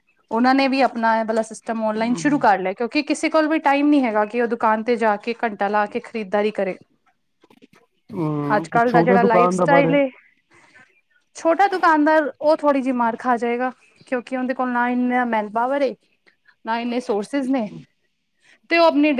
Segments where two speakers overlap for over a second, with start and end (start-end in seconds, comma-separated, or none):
8.6-10.0